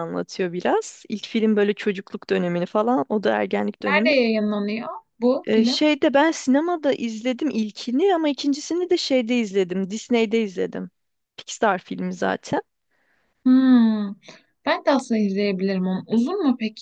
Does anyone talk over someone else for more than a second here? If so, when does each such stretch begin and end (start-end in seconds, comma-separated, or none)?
none